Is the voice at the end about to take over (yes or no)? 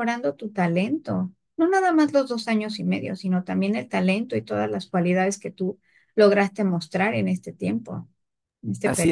yes